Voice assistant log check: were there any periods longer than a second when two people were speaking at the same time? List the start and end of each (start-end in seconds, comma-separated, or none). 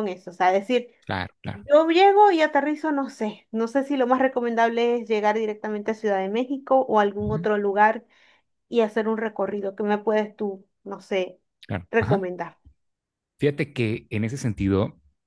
none